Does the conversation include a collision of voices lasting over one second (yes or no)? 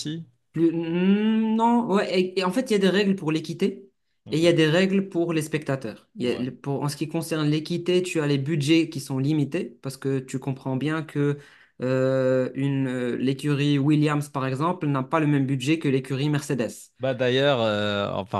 no